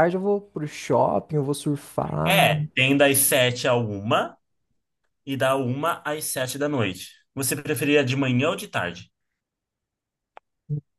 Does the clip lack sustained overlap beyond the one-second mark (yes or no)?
yes